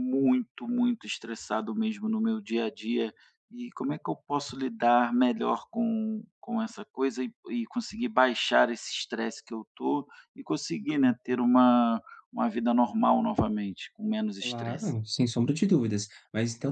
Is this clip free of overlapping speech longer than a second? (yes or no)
yes